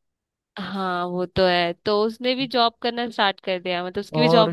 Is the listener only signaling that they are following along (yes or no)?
no